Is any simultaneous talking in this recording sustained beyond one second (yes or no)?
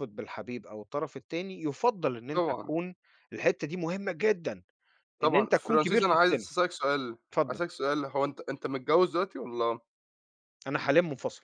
yes